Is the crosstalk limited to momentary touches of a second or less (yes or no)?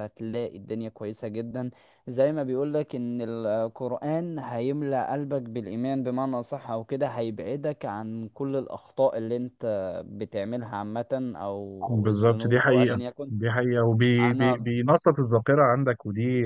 no